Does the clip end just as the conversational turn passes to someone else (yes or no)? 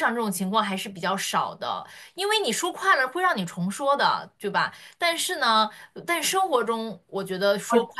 no